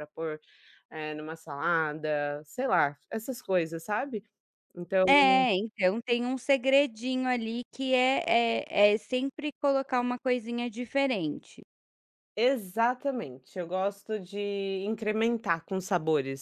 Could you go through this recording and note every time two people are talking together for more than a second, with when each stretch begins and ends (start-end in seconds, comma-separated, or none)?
none